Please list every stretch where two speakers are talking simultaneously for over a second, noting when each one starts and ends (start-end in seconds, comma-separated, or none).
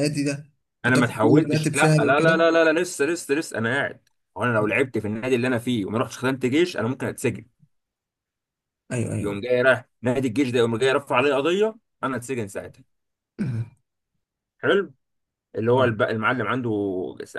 0.8-2.4